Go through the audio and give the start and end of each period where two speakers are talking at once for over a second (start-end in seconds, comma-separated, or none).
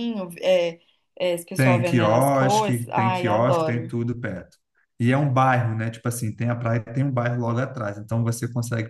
1.6-3.9